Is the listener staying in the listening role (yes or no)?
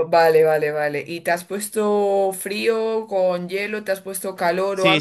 no